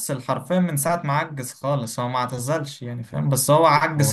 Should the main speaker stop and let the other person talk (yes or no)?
no